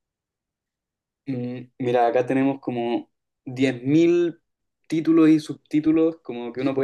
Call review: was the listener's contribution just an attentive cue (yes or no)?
yes